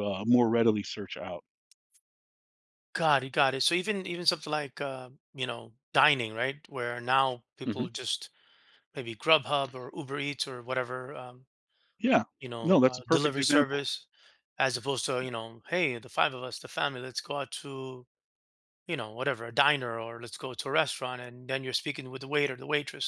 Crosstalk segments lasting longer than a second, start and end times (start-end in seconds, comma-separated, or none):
12.6-13.8